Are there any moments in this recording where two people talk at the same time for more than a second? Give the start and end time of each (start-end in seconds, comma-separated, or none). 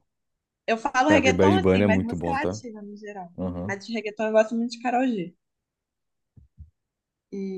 1.1-2.6